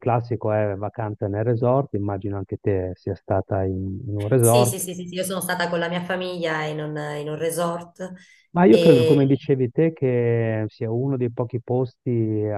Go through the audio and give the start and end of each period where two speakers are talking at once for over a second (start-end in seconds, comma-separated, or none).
none